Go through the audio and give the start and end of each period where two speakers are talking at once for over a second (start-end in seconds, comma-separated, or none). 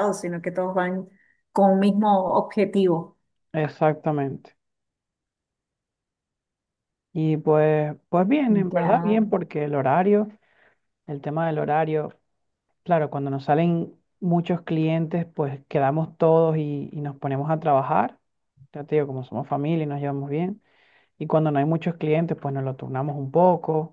none